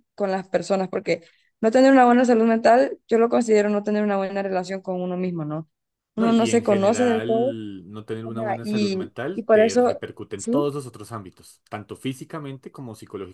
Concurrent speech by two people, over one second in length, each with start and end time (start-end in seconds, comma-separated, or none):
6.2-7.6, 8.2-10.7